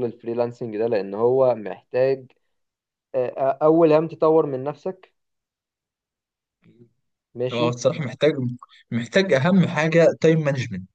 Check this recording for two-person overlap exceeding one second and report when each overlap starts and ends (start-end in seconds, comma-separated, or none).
none